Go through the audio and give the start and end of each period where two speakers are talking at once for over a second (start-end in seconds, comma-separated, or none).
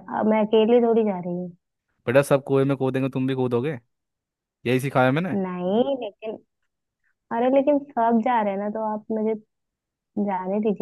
none